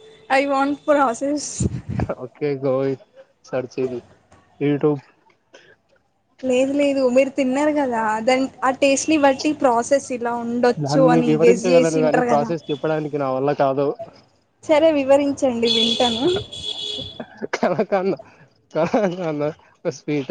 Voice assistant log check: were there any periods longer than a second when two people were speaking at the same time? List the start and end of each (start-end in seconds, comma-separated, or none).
10.8-12.5